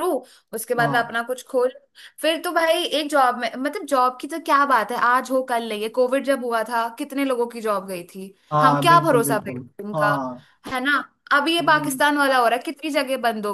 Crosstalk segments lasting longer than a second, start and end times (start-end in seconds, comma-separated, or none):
8.5-10.1